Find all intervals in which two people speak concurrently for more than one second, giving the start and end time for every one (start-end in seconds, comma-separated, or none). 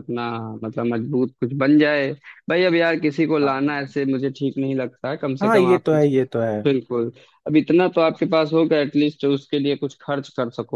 none